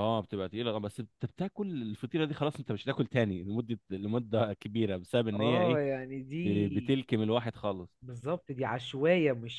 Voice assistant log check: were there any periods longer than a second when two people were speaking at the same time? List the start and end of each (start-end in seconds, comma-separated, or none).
none